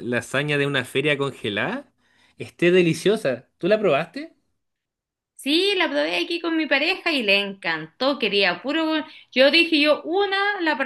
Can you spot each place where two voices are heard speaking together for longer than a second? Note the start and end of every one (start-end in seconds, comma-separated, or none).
none